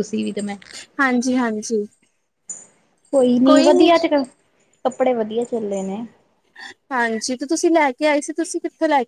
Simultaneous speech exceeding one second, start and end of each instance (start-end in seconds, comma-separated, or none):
none